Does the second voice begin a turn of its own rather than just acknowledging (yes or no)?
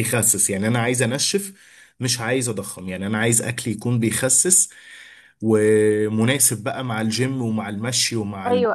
yes